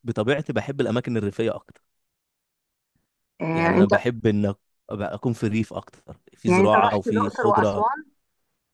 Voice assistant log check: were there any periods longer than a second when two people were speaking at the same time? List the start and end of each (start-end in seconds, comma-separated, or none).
6.5-7.8